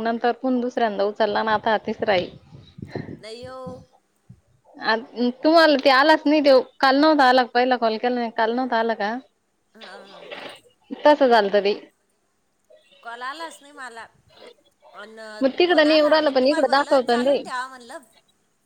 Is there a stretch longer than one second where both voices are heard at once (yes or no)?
yes